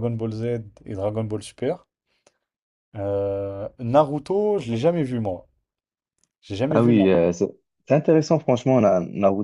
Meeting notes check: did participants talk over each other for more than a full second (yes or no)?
no